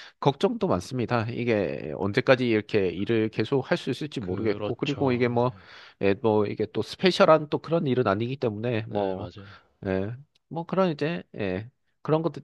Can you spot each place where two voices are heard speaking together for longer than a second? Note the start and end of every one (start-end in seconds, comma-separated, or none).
4.2-5.4